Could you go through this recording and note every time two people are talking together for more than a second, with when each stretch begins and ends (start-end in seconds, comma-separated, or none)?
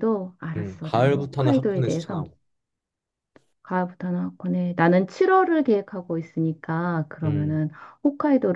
0.6-2.2